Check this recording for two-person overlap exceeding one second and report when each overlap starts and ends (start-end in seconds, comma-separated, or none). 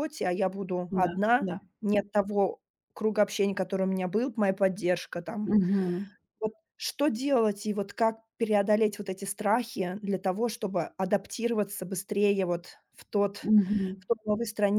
none